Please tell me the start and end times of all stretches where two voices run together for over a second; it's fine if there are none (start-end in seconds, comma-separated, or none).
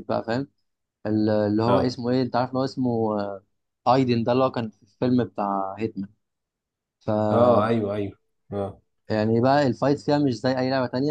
none